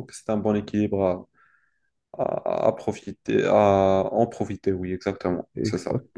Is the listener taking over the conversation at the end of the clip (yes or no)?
yes